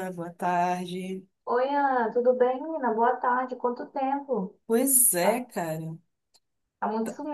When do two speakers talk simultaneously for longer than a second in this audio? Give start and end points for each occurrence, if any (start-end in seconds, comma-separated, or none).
none